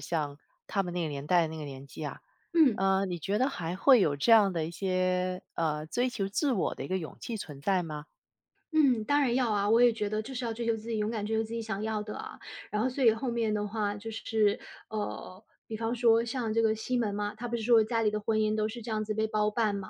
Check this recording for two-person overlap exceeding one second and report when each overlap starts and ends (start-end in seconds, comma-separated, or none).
none